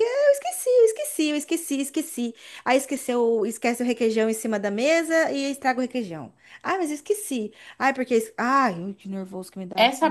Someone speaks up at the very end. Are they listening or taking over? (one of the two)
taking over